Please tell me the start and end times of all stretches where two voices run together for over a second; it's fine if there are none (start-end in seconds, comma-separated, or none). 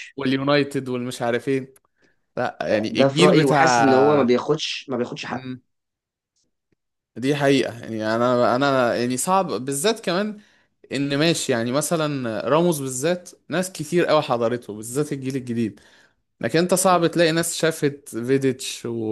2.7-4.3